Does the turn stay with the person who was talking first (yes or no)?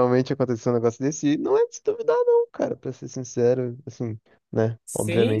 no